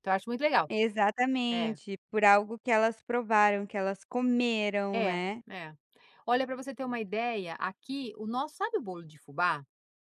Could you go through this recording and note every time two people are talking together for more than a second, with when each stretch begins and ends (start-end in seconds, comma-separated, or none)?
none